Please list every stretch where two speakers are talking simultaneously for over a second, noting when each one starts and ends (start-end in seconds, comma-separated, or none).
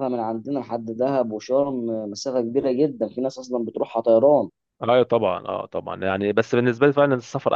none